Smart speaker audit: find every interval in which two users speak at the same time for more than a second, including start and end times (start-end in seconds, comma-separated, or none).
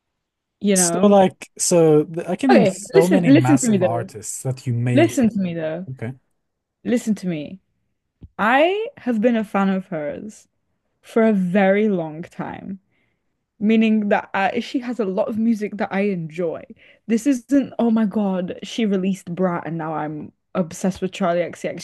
2.5-4.1